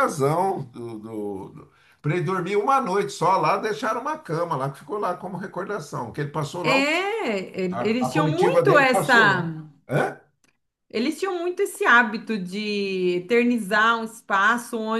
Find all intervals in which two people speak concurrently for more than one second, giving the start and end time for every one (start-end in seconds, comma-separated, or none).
7.7-9.4